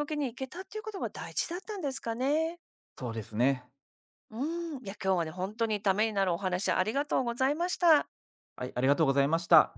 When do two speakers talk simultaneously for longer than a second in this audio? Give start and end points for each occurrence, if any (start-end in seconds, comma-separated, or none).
none